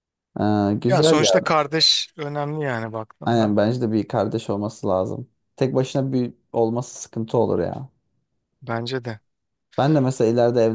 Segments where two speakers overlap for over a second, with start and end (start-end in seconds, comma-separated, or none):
none